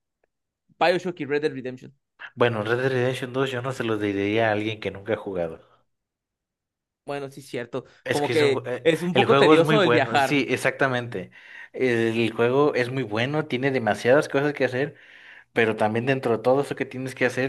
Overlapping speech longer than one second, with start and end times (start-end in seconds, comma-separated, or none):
8.0-10.4